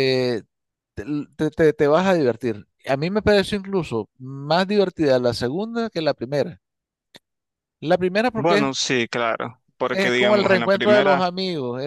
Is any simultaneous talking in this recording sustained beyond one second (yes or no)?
yes